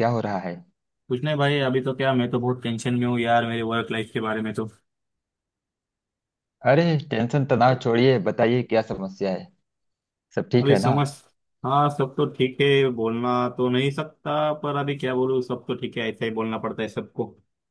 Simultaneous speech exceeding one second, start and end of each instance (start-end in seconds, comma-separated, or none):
none